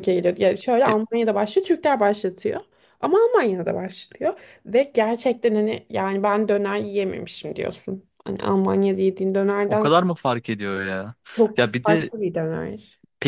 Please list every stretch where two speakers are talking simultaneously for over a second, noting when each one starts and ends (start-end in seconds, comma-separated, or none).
none